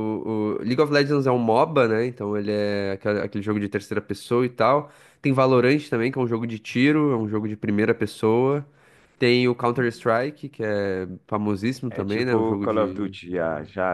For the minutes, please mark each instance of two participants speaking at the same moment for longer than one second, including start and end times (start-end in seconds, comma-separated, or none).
11.9-13.2